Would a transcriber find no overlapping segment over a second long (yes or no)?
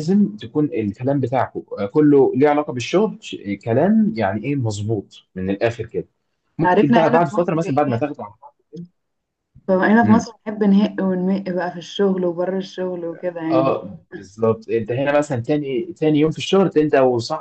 no